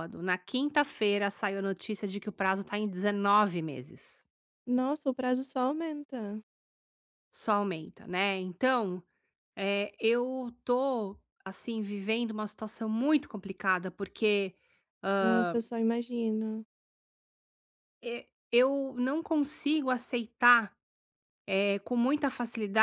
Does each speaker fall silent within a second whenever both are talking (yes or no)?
yes